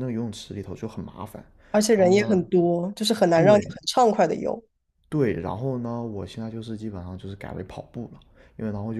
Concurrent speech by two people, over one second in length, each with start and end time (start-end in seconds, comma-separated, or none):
none